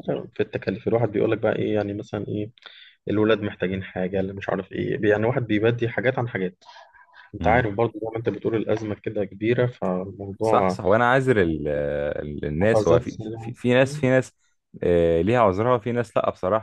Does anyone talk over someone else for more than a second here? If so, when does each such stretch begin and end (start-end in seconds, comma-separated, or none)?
12.6-14.1